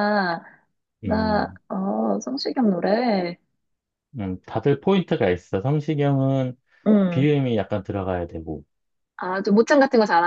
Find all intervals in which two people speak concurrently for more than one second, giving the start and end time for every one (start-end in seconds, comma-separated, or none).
none